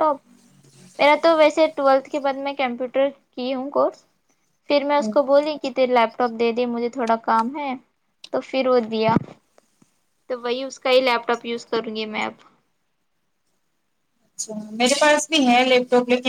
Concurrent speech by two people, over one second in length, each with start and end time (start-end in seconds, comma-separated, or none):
none